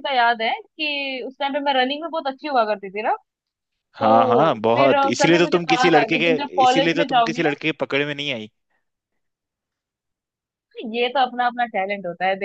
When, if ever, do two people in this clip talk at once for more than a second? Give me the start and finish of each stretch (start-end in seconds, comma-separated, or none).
4.8-7.5